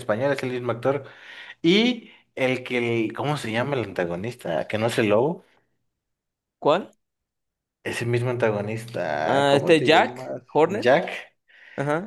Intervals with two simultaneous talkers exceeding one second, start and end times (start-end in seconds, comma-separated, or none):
9.2-10.9